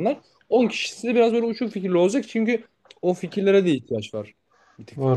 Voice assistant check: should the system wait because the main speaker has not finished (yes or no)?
no